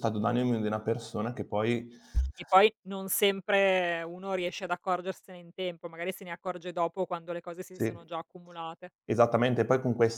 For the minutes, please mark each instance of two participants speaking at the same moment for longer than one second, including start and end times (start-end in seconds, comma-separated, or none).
none